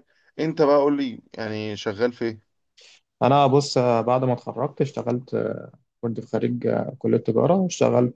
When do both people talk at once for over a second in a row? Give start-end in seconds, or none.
none